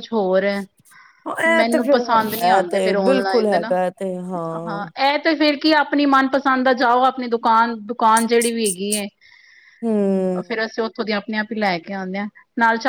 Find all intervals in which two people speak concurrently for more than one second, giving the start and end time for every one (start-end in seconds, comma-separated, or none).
1.6-3.6